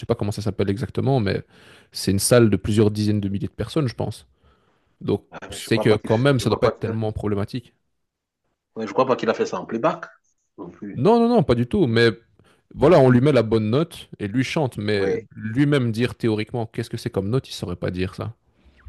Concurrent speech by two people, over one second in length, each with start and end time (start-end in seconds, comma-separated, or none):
5.3-7.0